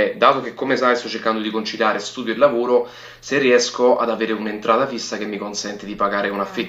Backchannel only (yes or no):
no